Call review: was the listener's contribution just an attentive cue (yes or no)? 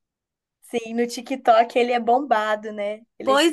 no